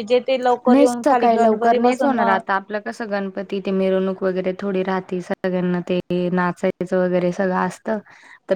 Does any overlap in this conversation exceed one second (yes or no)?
yes